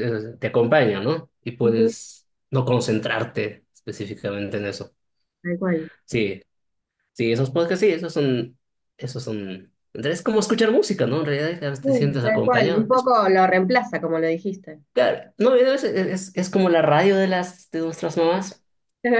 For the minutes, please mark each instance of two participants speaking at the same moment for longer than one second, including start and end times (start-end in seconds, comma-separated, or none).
11.8-13.1